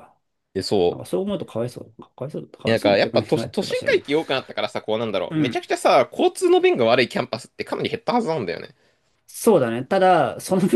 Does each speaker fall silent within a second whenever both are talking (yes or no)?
no